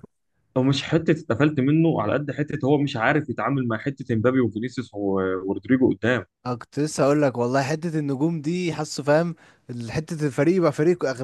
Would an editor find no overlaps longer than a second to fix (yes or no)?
yes